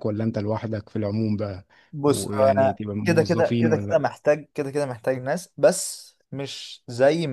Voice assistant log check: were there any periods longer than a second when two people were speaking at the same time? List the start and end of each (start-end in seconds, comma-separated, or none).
2.0-4.0